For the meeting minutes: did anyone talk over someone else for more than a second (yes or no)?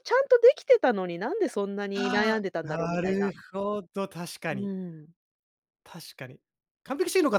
yes